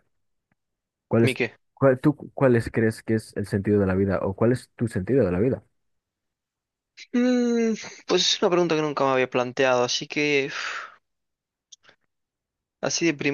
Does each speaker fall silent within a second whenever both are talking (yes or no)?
yes